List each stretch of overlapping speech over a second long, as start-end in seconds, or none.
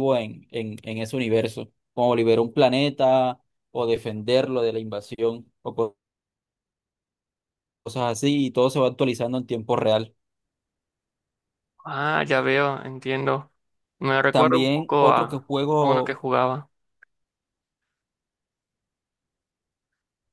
14.3-16.2